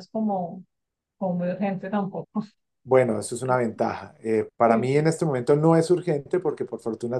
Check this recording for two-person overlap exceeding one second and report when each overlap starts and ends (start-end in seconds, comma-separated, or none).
none